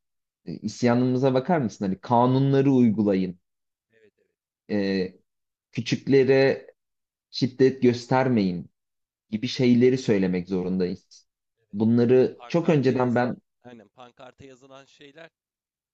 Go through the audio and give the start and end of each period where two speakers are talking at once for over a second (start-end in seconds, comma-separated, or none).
11.7-13.4